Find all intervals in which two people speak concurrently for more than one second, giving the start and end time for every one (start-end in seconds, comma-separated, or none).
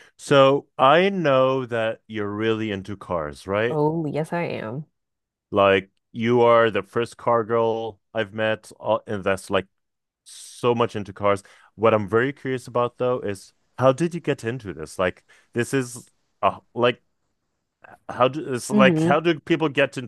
none